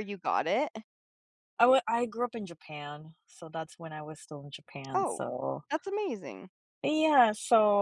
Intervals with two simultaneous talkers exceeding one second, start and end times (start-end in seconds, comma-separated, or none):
none